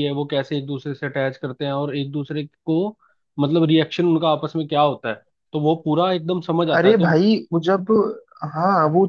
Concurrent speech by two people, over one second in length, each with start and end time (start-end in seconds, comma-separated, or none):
none